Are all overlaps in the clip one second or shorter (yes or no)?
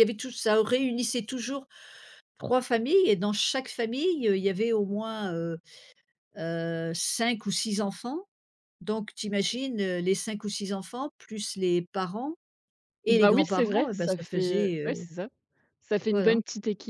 no